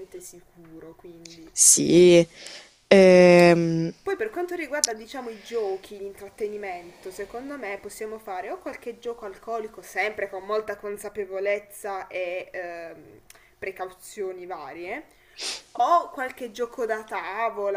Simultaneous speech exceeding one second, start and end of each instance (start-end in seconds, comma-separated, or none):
none